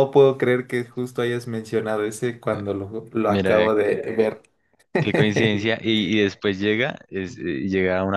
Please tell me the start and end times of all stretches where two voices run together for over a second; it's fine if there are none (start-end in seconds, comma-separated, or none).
none